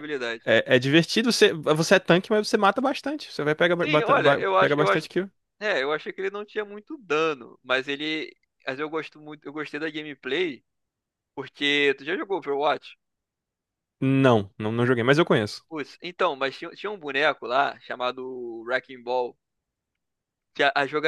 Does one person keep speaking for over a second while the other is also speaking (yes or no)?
yes